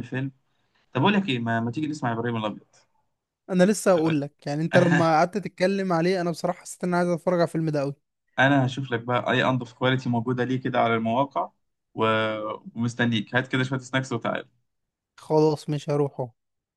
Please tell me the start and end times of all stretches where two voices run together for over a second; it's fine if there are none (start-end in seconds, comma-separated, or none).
none